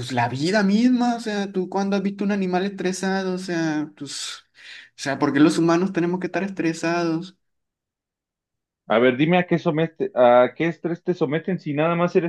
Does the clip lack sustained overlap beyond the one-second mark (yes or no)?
yes